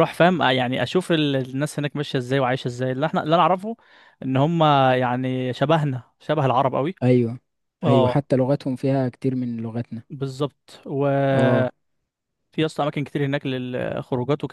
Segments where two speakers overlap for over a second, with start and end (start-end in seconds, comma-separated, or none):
none